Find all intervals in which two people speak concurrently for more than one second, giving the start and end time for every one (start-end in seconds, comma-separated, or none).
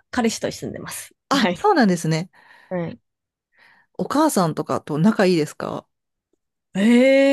none